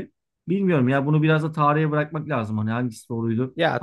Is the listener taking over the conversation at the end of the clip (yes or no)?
yes